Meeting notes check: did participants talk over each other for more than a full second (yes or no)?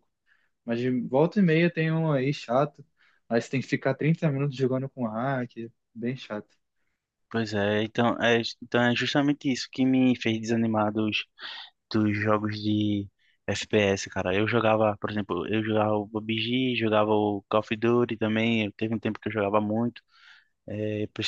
no